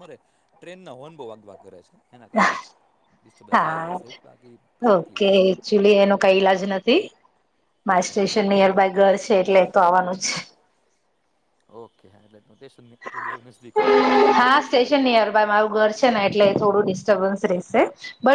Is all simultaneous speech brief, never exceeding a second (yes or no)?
yes